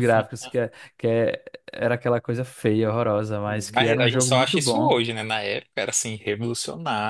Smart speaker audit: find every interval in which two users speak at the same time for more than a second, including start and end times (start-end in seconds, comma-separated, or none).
3.7-5.0